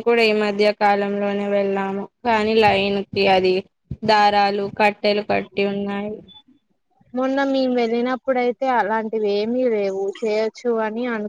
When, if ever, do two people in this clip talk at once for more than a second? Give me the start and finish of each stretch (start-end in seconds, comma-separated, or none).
none